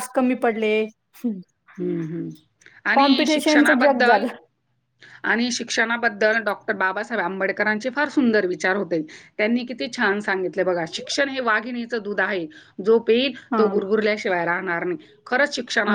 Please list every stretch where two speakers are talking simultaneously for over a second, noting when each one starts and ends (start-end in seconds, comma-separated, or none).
2.9-4.2